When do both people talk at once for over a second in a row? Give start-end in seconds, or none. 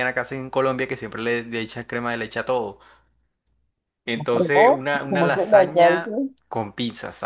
4.3-6.4